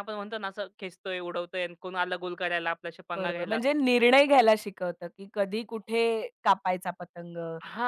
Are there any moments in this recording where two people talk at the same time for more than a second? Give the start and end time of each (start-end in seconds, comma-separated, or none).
none